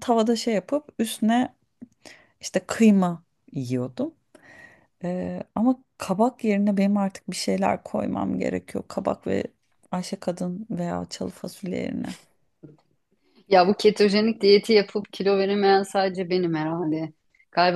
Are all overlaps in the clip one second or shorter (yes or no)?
yes